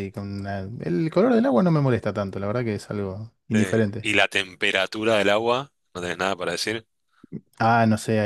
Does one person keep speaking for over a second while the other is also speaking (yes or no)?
no